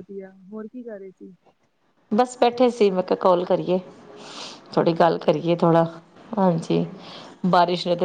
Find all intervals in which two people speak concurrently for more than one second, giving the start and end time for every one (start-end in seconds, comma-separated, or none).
none